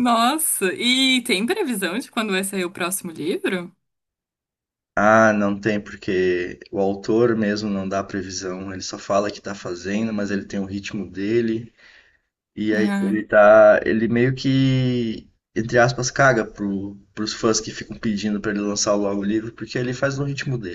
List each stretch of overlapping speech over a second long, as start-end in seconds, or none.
none